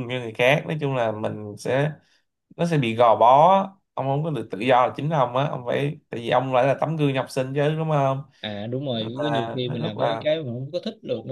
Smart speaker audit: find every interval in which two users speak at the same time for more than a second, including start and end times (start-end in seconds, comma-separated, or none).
8.9-10.2